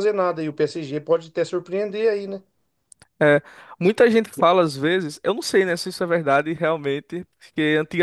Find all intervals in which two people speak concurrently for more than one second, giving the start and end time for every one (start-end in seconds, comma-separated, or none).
none